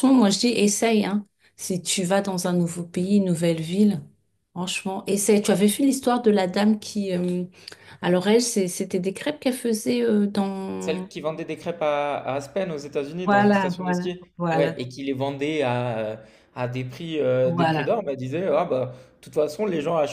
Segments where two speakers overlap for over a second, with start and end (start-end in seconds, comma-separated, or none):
13.2-14.8